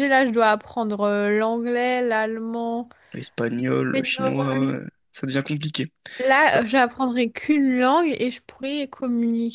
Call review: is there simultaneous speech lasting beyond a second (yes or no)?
yes